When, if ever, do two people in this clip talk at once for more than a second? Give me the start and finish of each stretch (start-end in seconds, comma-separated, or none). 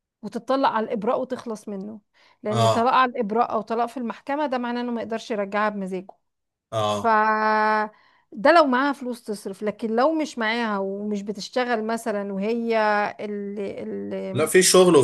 none